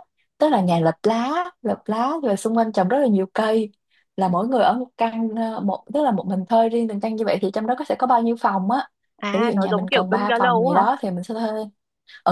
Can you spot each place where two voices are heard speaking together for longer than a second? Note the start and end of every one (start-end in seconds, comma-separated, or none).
9.3-10.8